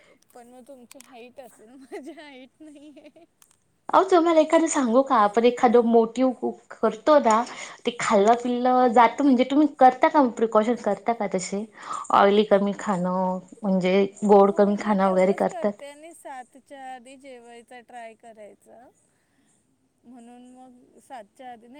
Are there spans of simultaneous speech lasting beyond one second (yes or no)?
no